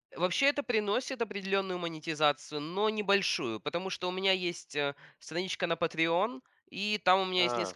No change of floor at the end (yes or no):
yes